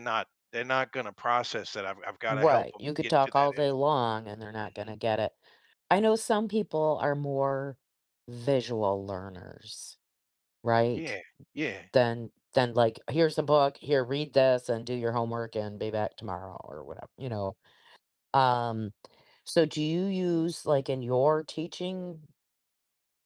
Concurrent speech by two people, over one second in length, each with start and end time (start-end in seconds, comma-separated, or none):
2.3-4.0